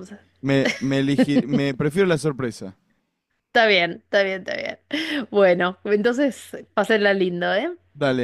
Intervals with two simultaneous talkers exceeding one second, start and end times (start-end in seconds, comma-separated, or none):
none